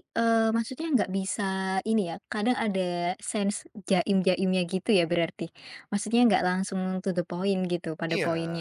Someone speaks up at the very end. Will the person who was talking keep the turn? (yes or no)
no